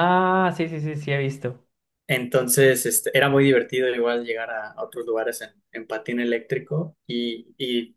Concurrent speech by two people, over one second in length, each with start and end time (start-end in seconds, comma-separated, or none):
none